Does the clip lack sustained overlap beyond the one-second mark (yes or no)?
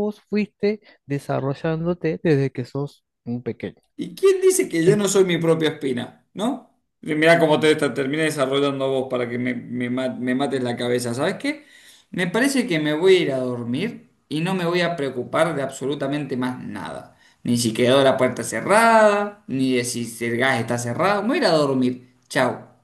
yes